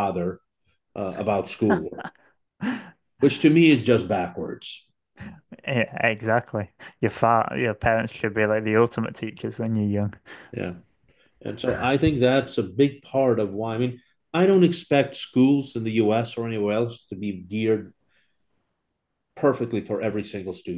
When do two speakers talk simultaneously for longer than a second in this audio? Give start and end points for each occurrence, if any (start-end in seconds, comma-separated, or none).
none